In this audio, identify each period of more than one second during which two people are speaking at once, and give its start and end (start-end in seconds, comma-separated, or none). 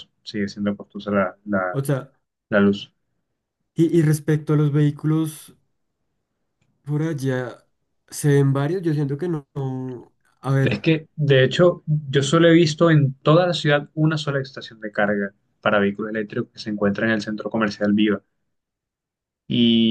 none